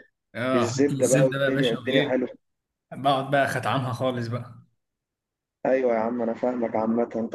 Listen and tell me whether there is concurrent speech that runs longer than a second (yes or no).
yes